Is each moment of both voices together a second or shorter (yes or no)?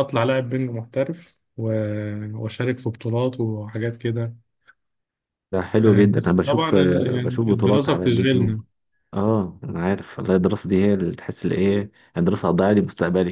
no